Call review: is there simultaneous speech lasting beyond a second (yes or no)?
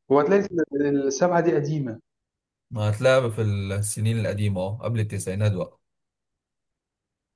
no